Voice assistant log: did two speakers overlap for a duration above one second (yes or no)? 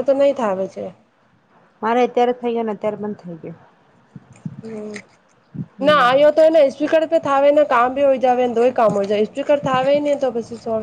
no